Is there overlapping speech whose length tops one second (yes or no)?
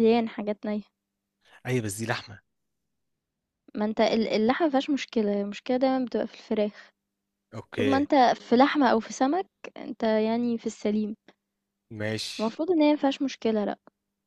no